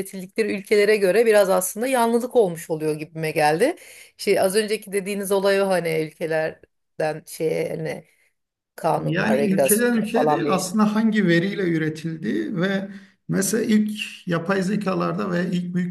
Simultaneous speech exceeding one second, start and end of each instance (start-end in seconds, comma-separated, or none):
9.0-10.7